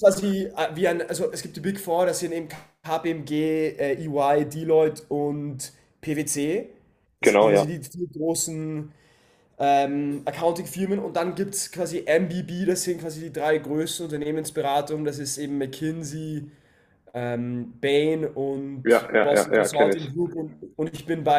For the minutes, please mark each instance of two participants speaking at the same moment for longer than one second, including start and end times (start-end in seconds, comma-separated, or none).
18.8-20.1